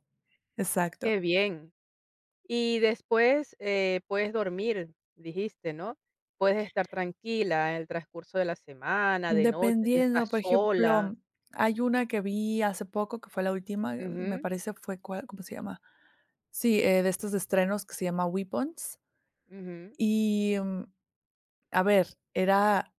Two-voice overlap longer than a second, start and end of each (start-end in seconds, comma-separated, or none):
9.3-11.1